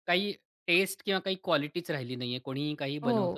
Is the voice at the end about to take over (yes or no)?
yes